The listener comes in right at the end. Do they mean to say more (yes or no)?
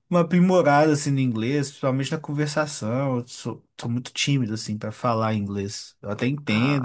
no